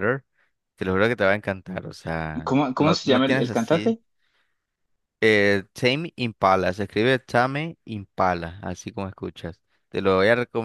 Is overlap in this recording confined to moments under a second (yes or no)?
no